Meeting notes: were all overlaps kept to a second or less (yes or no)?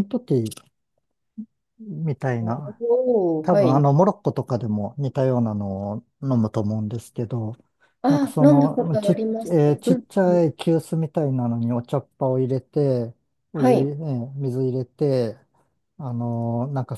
no